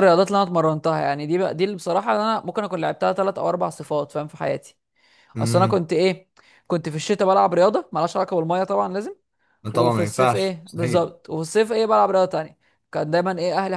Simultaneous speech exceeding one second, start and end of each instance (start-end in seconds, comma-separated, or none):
9.7-11.1